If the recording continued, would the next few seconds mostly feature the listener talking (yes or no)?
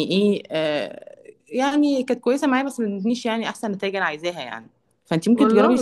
no